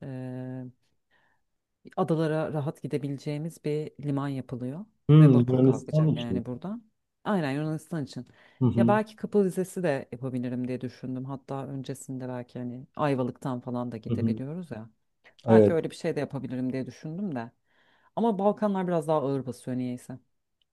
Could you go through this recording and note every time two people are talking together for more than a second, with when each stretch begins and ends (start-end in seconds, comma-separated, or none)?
5.1-6.4